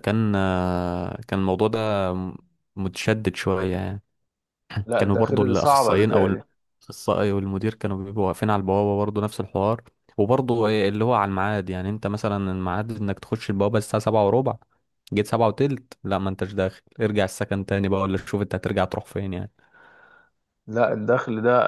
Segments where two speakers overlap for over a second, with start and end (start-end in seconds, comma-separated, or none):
5.0-6.3